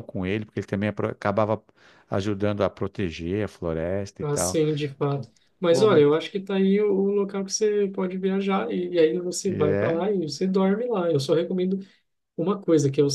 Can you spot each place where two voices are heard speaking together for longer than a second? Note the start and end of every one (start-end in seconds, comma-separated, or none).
none